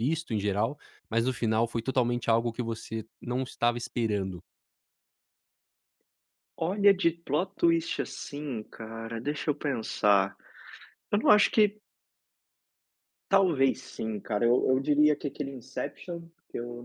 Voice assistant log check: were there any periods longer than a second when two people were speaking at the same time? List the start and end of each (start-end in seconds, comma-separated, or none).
none